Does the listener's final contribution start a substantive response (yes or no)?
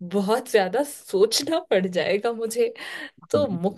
no